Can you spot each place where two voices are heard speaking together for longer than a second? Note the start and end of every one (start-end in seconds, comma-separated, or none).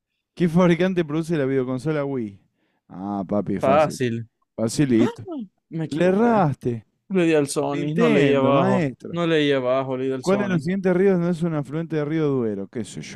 7.7-9.2